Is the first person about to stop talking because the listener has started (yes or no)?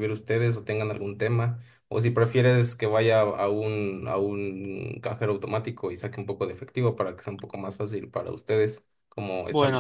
yes